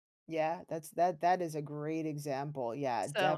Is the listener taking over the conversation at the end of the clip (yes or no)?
yes